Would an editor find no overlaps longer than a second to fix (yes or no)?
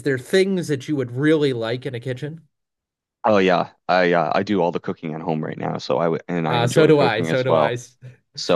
no